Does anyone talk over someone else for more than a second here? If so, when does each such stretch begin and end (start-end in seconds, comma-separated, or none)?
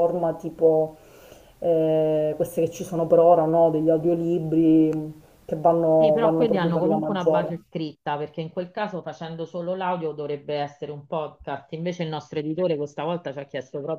6.0-7.5